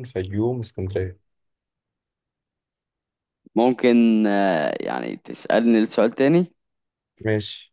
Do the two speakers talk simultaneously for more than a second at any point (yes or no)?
no